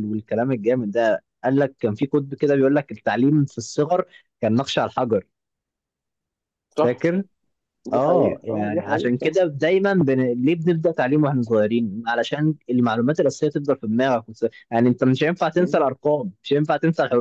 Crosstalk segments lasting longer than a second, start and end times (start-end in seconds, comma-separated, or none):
7.9-9.4